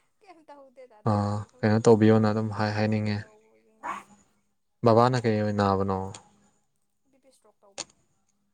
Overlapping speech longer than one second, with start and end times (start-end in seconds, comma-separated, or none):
1.6-3.2